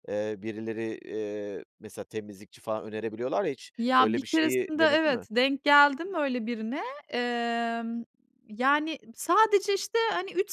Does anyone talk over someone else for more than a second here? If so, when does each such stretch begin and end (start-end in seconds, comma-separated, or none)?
3.8-5.3